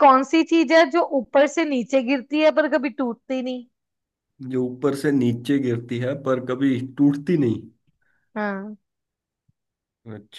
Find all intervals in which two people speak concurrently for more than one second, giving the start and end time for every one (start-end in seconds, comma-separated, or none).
none